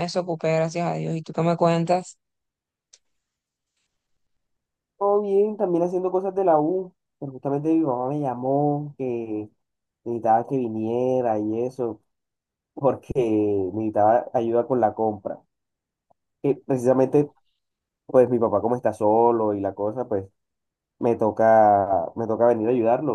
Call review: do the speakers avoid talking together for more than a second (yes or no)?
yes